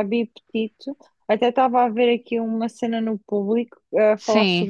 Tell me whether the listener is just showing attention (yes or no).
yes